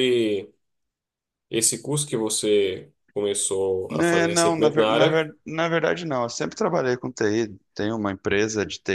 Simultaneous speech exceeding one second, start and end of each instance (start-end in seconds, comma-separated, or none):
3.9-5.3